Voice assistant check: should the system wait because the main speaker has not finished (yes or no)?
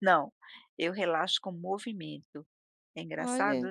no